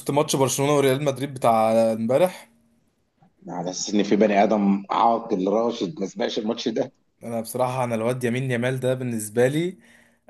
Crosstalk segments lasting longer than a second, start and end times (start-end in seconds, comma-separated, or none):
none